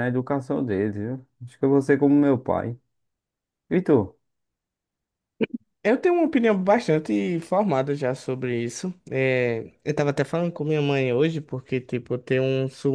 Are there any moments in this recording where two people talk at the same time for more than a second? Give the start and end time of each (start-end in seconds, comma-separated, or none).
none